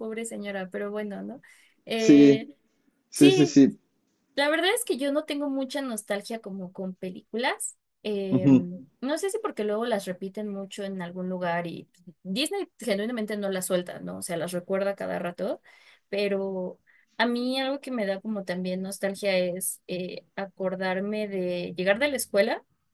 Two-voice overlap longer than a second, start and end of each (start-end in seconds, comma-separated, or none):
none